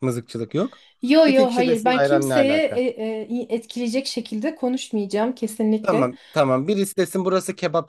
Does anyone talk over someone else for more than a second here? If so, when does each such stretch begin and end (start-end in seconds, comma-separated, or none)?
1.2-2.8